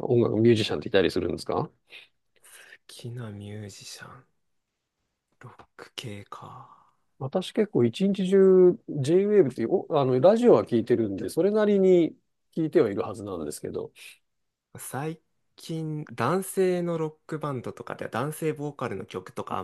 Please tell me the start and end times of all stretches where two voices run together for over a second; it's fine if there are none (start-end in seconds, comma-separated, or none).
none